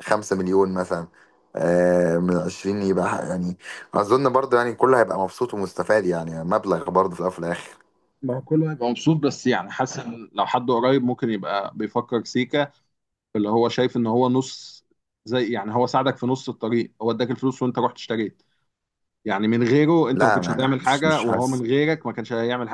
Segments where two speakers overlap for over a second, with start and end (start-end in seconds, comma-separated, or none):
20.1-21.6